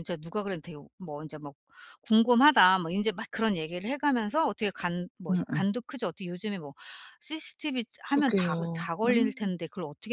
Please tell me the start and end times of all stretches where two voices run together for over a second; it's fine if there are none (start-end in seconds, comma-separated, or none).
8.1-9.5